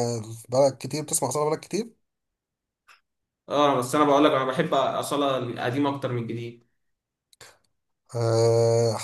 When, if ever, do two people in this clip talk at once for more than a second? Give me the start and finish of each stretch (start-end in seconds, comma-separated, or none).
none